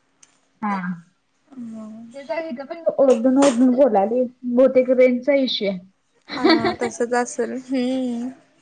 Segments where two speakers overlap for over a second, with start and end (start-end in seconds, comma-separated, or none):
none